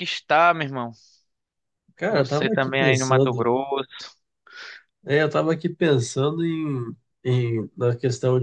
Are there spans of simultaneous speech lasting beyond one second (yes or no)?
yes